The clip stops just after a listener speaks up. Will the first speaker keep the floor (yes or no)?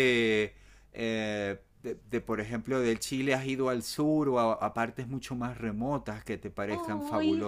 no